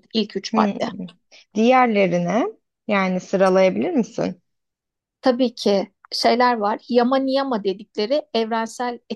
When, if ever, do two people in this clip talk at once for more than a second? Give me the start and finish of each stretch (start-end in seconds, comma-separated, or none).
none